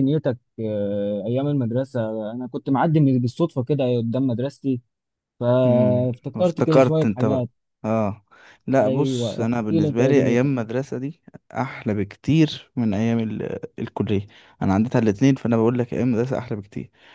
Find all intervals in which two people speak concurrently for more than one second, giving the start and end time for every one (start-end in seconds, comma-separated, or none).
5.7-7.5, 8.8-10.5